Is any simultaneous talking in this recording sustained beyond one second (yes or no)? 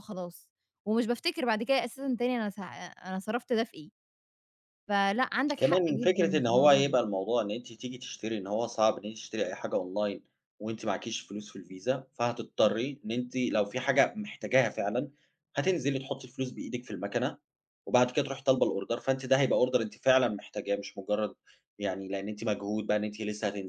yes